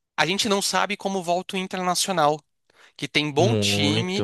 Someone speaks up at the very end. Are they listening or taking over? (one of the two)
listening